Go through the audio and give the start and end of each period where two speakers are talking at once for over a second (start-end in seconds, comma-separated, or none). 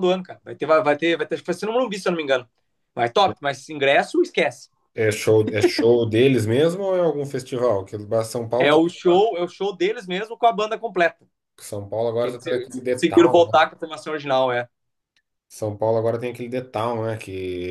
12.2-13.7